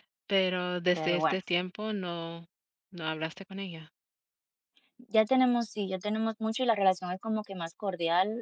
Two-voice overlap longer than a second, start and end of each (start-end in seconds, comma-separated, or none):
none